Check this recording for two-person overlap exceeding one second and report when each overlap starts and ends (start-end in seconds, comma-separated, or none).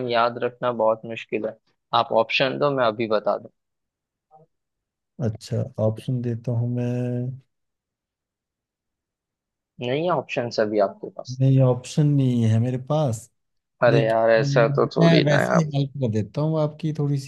13.9-15.7